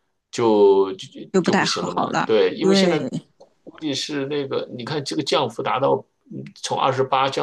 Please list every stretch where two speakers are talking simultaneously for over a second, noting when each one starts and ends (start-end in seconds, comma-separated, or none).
1.3-3.0